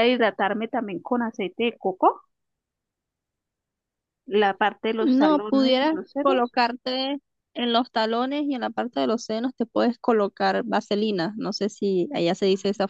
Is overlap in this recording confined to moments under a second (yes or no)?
no